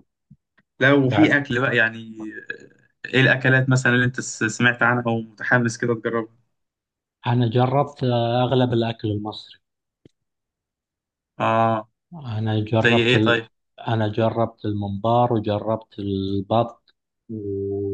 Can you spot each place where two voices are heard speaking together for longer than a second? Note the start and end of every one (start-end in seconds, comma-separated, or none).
none